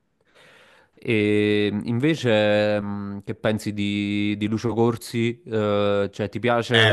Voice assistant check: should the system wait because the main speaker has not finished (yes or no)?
no